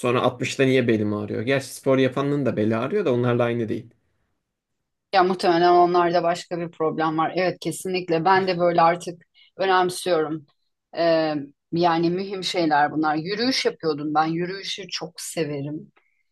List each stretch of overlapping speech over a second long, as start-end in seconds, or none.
none